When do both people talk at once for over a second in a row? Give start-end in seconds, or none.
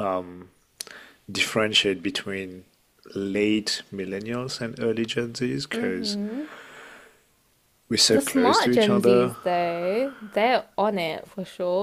8.1-9.4